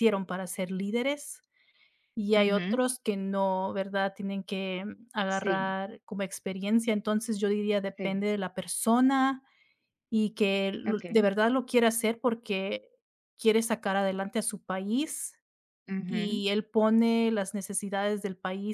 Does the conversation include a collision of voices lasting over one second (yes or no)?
no